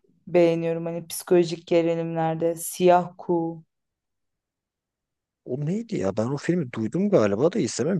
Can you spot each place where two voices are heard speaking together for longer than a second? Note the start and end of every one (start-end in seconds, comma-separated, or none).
none